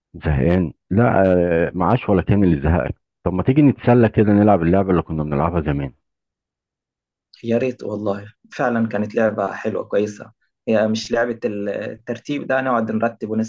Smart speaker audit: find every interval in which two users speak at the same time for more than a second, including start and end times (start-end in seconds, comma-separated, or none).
none